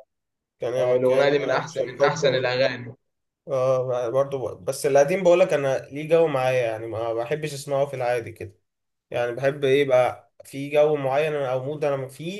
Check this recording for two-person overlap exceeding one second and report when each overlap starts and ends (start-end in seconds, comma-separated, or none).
0.8-2.2